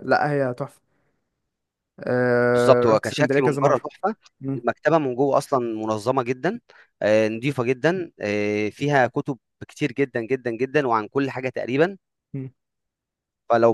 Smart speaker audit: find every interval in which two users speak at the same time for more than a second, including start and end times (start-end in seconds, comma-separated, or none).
2.5-3.9